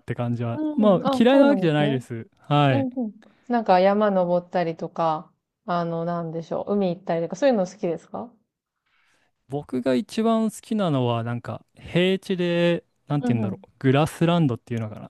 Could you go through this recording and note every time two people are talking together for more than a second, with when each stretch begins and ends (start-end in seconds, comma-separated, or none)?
0.5-2.0